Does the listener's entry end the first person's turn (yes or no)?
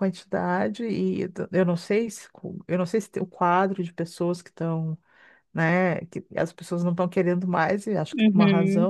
yes